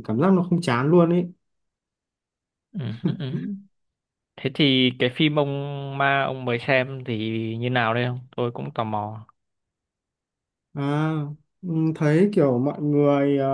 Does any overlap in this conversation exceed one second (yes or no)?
no